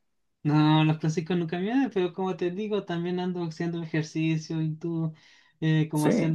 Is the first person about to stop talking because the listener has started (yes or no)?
no